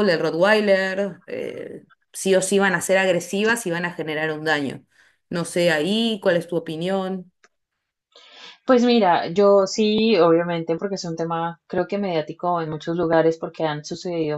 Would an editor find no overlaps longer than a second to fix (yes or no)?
yes